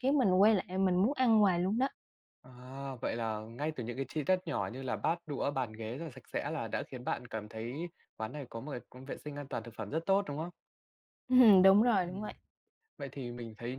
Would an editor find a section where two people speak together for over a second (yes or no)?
no